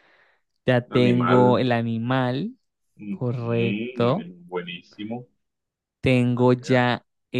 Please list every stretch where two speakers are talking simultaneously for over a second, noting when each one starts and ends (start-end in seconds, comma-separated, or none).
none